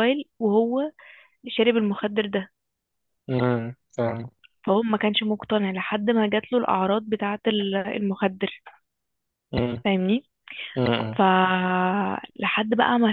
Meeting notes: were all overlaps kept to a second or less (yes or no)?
yes